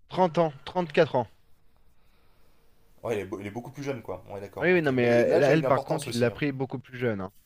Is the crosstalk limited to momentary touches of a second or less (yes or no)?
no